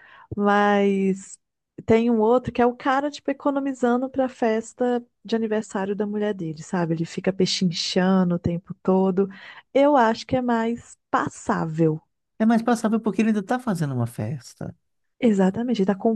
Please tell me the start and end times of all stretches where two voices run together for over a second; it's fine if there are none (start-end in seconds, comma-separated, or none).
none